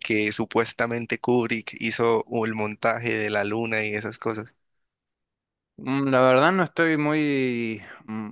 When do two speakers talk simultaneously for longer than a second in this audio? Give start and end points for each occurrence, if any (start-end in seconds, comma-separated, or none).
none